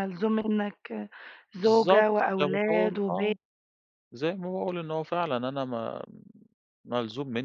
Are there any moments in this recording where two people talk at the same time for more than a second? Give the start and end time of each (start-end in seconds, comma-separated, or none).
1.6-3.3